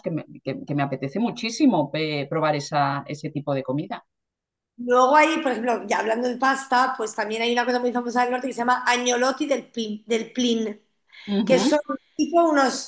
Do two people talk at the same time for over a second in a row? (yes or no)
no